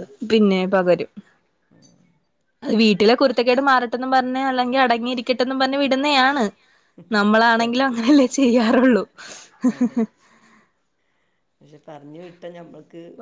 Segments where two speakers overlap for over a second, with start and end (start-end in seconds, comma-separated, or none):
none